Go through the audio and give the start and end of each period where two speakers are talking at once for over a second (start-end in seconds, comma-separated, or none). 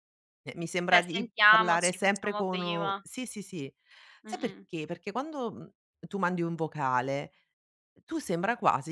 0.9-3.0